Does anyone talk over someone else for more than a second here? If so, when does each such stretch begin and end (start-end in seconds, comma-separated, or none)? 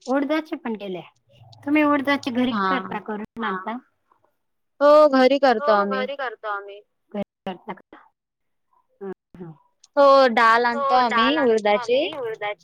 none